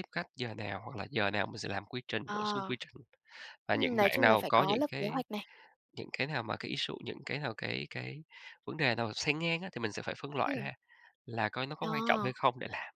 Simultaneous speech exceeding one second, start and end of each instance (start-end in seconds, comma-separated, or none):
3.7-5.2